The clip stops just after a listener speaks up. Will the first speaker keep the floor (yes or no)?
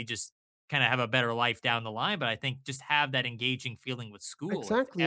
no